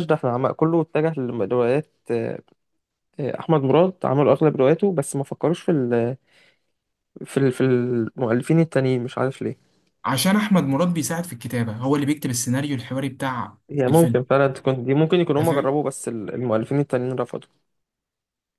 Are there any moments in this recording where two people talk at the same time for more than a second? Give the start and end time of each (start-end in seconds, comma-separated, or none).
none